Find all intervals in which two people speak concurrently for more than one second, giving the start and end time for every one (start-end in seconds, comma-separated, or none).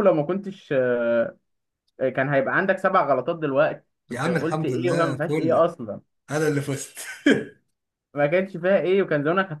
4.1-5.6